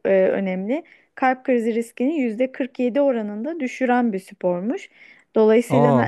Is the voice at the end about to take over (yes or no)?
no